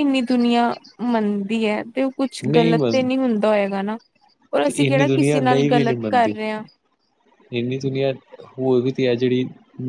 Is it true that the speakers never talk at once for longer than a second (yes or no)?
no